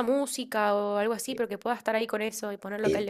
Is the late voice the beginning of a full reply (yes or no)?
yes